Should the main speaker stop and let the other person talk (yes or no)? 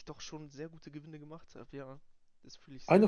yes